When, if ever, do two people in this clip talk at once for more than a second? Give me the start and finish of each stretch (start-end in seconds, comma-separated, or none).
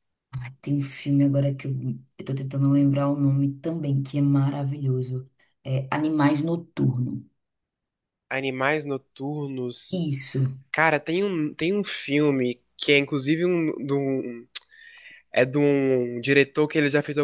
none